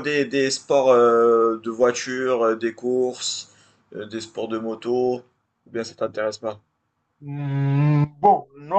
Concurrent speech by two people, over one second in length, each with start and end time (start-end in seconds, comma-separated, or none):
none